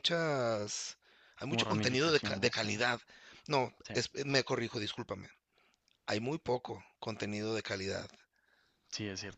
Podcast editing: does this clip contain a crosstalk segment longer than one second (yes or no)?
yes